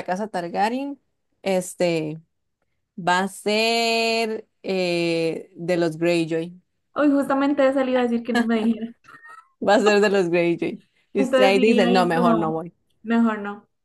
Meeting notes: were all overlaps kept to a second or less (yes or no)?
no